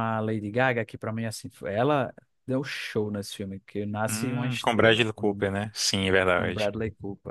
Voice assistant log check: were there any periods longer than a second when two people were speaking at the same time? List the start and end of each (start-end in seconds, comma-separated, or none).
4.1-5.8